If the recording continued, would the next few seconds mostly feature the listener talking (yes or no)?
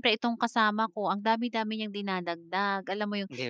no